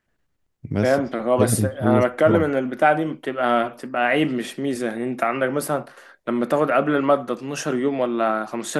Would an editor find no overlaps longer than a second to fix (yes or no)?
no